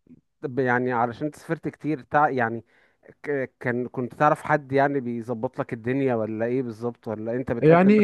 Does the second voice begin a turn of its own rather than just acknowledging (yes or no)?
yes